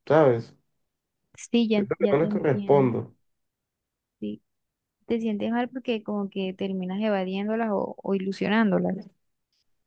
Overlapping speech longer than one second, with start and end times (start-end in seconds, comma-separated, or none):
1.7-3.0